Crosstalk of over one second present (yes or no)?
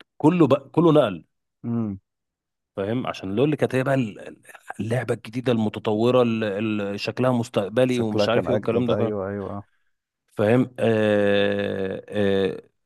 yes